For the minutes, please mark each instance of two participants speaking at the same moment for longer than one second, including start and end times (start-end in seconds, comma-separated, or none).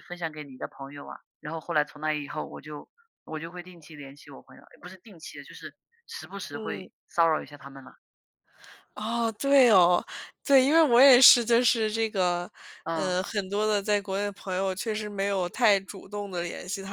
none